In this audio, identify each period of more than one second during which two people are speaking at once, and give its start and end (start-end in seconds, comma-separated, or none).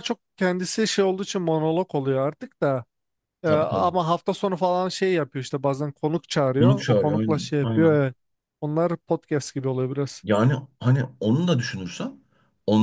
6.6-8.0